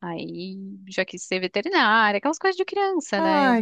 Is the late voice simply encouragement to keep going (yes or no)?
no